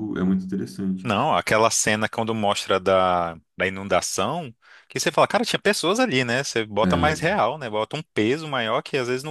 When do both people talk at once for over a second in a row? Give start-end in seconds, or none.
none